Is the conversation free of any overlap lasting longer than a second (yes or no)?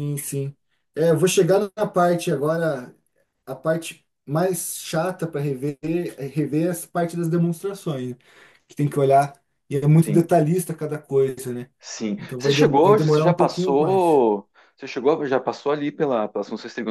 no